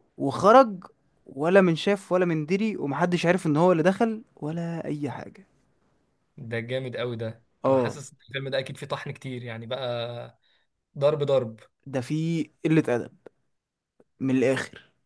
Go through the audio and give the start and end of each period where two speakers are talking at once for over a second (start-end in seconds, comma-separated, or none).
none